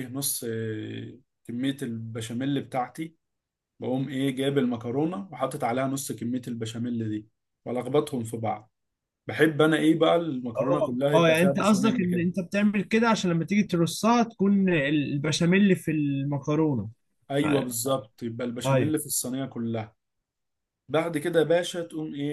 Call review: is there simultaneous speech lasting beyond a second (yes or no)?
yes